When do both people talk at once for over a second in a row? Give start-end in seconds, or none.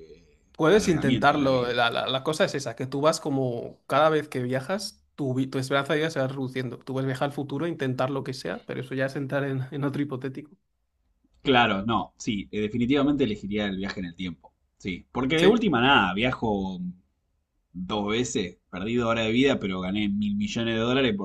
0.6-1.8